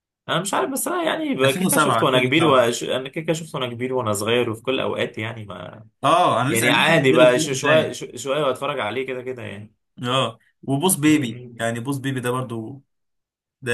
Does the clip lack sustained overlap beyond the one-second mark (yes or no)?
no